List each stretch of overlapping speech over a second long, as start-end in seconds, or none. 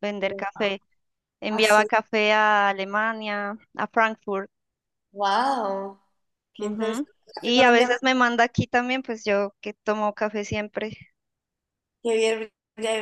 6.6-8.0